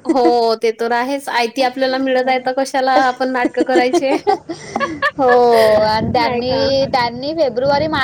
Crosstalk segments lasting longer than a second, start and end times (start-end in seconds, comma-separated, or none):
none